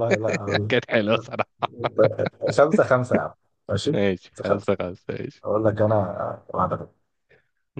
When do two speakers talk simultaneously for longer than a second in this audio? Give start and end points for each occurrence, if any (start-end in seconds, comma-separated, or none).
none